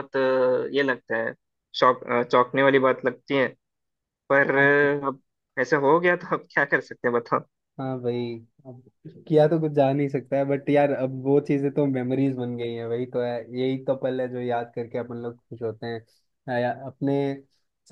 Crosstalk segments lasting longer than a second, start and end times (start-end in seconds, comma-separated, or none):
none